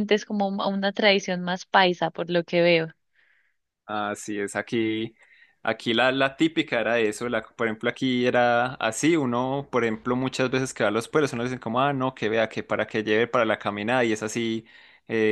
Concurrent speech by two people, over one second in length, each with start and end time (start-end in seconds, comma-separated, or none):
none